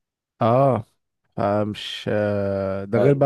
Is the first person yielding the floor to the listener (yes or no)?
no